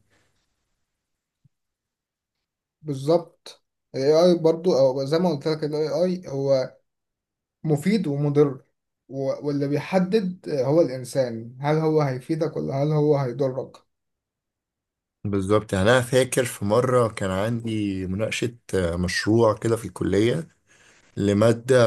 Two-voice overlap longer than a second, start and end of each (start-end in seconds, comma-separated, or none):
none